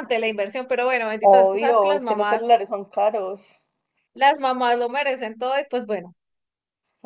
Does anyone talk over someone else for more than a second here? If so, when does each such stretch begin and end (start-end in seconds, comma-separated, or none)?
1.2-2.6